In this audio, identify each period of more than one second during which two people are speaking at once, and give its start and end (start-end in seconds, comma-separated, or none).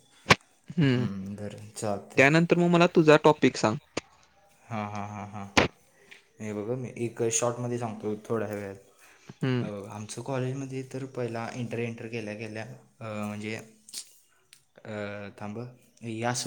none